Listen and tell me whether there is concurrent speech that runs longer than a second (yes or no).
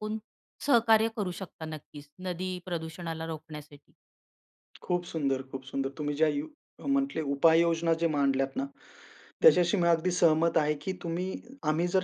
no